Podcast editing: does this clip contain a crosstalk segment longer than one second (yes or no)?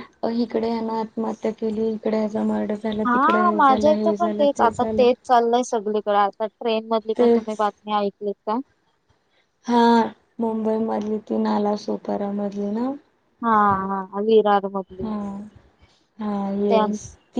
yes